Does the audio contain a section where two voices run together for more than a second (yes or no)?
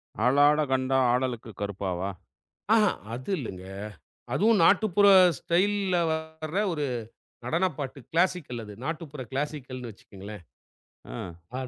no